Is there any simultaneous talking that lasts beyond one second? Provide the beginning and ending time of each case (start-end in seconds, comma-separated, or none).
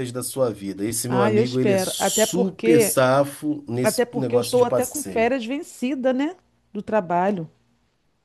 1.1-3.0, 3.8-5.3